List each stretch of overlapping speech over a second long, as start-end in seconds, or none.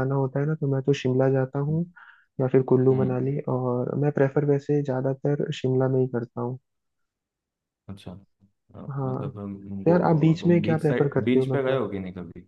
9.8-11.8